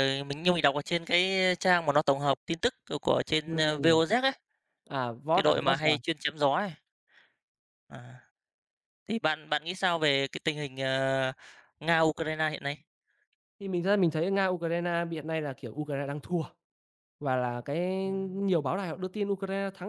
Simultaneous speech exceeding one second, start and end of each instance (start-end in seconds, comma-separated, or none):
none